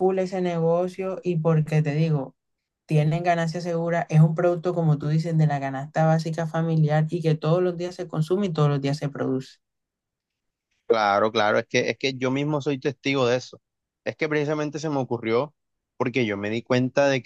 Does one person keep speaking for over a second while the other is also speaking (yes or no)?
no